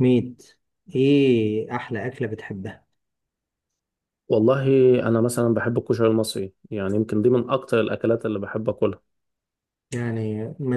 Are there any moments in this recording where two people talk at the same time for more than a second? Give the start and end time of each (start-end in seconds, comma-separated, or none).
none